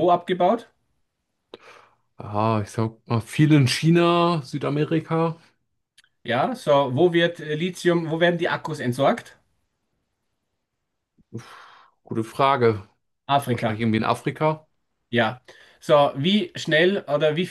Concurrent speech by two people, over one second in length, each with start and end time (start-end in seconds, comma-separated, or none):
none